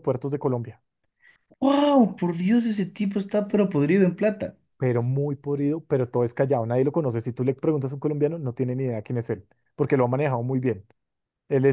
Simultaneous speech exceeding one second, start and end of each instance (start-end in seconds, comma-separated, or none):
none